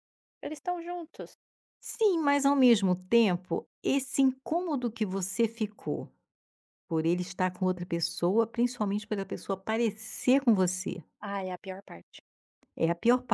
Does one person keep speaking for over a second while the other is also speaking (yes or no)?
no